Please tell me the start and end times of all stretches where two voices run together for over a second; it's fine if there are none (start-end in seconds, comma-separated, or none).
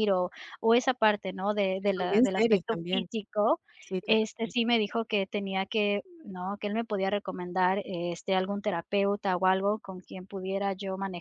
1.8-3.1